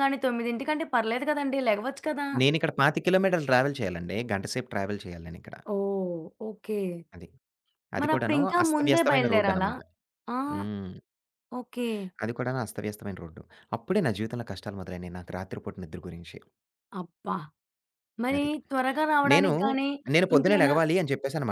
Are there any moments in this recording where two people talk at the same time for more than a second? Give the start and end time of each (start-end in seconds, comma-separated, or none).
8.0-9.7